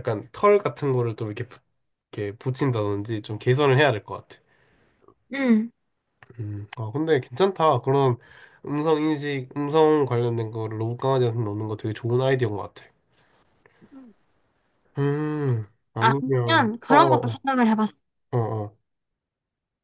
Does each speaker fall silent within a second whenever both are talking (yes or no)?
no